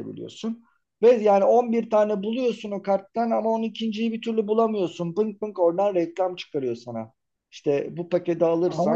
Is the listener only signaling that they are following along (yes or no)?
yes